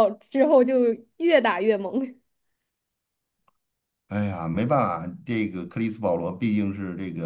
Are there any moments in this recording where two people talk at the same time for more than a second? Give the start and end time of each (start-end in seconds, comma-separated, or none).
none